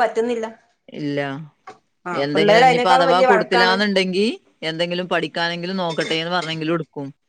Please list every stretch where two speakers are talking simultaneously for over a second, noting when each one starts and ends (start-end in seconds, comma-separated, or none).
2.2-3.7